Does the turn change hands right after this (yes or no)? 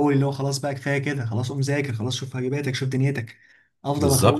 no